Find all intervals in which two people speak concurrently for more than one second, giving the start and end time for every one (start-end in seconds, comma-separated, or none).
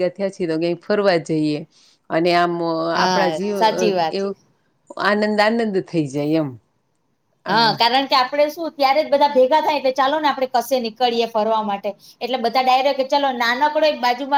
none